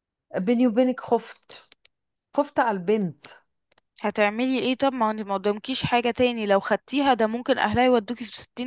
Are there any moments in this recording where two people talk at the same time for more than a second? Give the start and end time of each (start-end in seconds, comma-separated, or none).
none